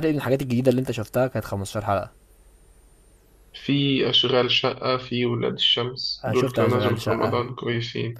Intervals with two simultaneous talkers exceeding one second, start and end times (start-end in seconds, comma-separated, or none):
6.2-7.5